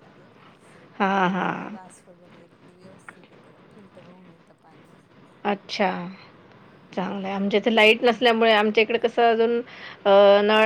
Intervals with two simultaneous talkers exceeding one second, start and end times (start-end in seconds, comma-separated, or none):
none